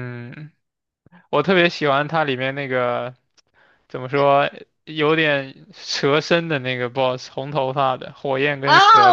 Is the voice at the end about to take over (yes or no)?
yes